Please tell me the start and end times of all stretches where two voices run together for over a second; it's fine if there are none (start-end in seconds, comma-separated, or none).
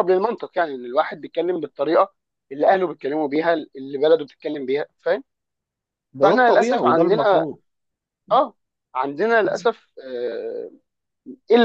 6.2-7.5